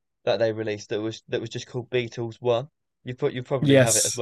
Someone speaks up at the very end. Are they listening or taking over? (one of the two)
listening